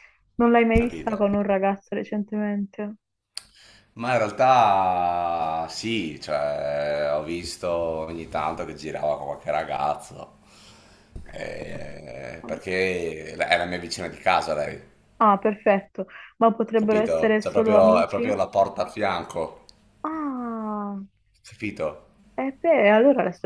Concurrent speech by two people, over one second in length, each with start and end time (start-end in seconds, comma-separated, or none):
16.7-18.3